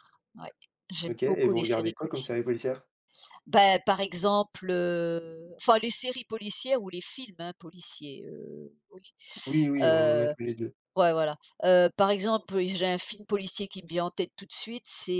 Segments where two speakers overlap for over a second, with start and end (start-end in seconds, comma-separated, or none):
1.1-2.4